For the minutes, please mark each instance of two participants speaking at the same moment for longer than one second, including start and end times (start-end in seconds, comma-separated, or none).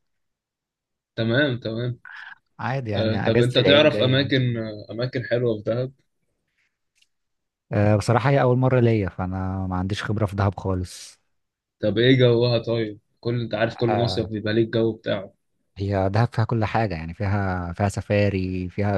3.0-4.6